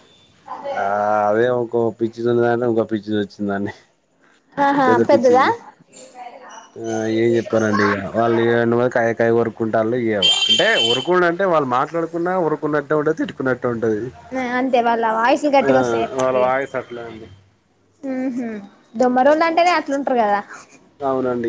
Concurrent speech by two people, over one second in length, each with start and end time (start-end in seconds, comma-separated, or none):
none